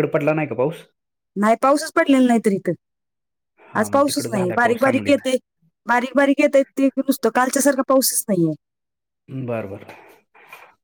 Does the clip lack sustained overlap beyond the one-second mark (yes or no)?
no